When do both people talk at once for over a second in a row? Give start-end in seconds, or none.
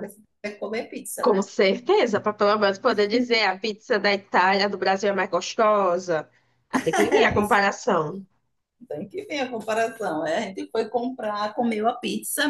none